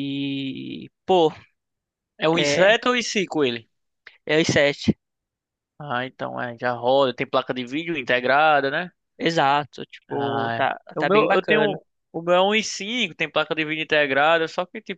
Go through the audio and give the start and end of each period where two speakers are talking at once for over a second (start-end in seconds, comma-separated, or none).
10.1-11.8